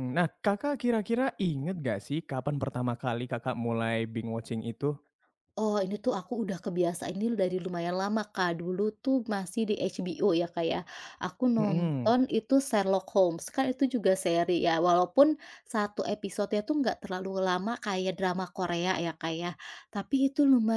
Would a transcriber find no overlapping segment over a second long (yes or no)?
yes